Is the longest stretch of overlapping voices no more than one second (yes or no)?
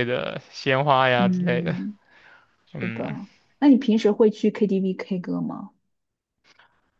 yes